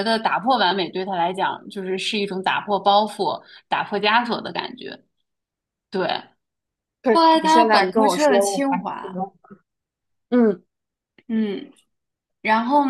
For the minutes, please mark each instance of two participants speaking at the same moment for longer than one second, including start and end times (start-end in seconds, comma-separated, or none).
7.1-9.2